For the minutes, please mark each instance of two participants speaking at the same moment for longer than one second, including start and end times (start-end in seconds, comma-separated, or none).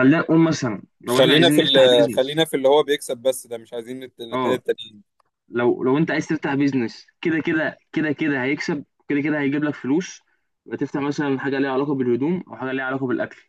1.1-2.4